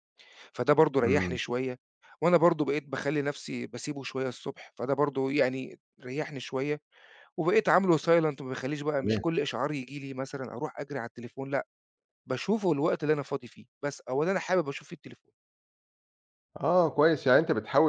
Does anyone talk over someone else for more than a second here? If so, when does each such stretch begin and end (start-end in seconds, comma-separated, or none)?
none